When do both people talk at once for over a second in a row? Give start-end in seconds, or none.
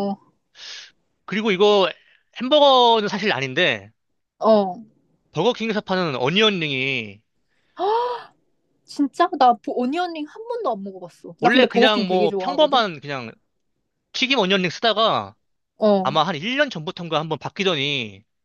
11.4-12.8